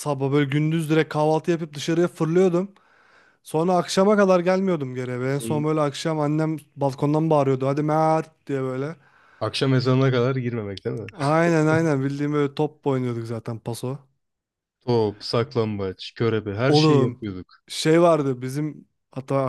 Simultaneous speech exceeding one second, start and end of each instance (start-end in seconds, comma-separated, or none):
none